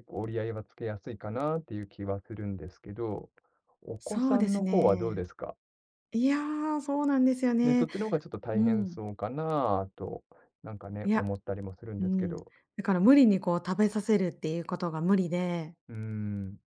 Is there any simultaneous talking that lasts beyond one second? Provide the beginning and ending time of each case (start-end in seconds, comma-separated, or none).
4.0-5.2